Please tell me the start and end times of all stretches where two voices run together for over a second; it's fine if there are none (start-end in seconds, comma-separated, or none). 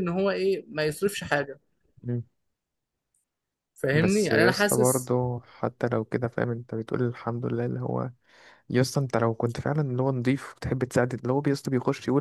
3.9-5.1